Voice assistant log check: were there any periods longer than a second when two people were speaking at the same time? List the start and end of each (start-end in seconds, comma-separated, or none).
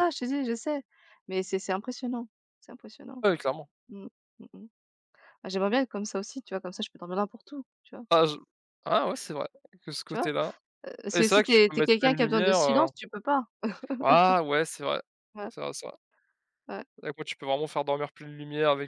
11.1-12.9